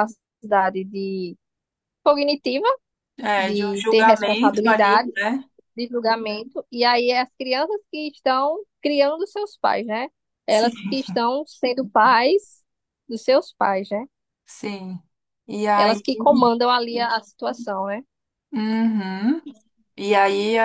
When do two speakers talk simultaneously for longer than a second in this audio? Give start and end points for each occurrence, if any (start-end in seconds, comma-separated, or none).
3.4-5.1